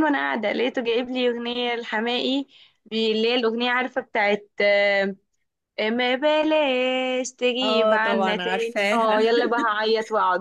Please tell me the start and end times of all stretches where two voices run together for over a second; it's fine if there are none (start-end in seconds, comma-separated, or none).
7.6-9.2